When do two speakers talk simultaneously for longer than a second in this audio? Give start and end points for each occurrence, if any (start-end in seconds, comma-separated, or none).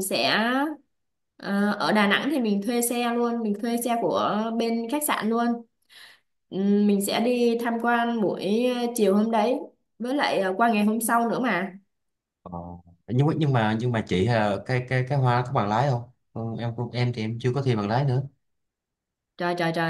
none